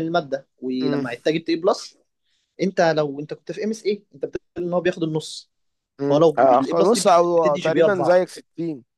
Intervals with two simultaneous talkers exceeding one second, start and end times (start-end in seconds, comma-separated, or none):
6.1-8.2